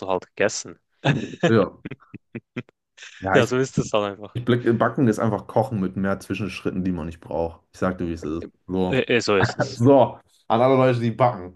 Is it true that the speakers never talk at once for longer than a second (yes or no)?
yes